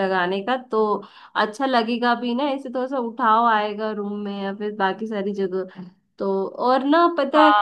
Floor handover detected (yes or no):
yes